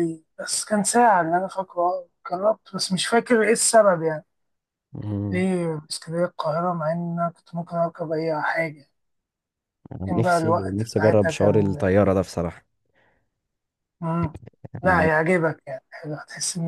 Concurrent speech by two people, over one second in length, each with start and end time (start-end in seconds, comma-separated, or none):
10.1-11.8